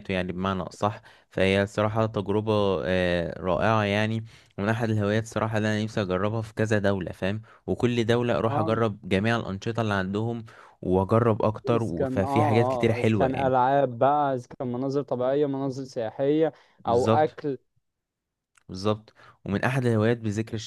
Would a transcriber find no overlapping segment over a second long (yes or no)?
no